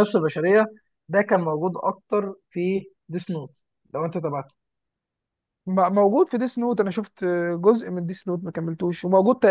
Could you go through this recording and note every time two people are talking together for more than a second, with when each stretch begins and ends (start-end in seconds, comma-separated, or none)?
none